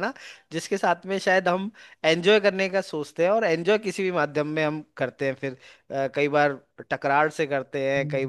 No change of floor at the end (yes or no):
yes